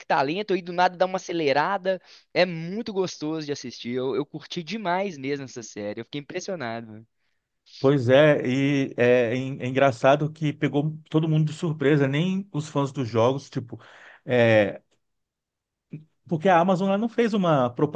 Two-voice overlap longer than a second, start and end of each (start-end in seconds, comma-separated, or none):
none